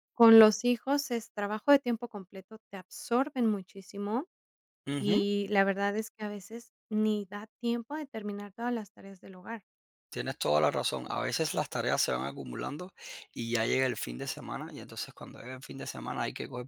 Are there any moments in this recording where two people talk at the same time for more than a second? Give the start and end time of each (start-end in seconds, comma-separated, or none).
none